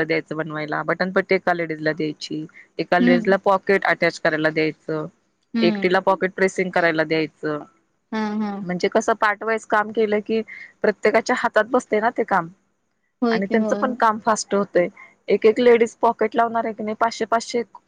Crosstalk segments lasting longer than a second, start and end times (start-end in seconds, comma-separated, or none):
none